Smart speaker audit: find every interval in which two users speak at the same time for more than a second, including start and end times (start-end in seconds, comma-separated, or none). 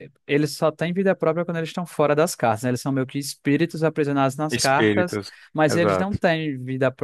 4.5-6.2